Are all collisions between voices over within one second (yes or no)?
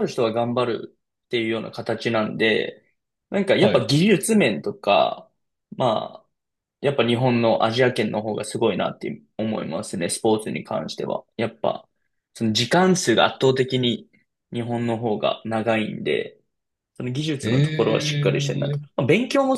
no